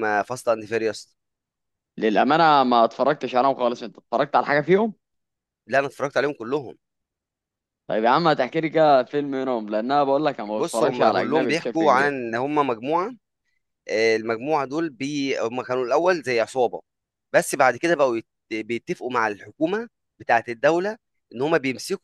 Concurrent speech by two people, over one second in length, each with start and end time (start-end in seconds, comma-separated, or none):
10.5-12.2